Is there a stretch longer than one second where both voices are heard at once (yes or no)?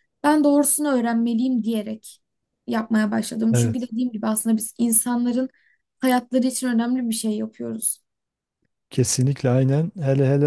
no